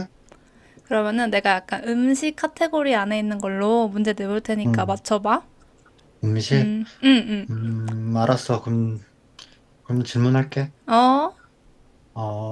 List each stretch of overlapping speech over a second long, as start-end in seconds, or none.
none